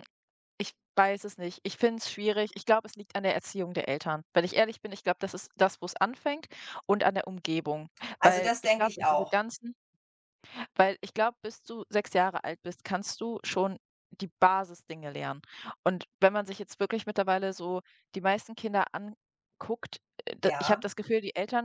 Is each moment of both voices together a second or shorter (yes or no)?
no